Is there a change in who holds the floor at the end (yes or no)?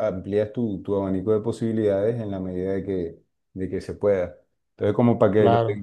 no